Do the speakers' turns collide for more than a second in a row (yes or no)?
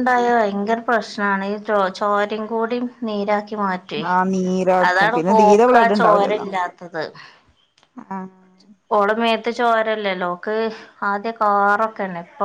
yes